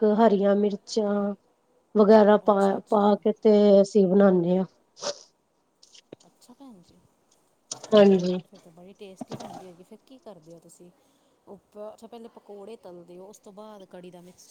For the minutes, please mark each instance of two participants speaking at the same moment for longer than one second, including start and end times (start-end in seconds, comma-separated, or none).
none